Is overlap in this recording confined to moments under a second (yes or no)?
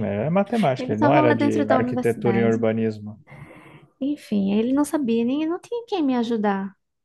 no